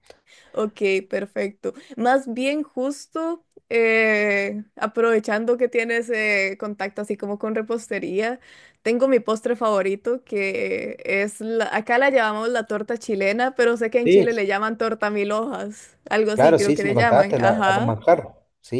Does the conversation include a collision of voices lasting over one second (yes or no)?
yes